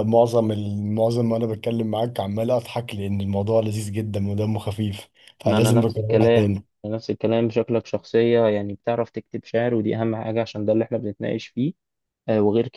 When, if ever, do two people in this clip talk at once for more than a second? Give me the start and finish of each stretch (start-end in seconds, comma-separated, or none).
5.5-6.7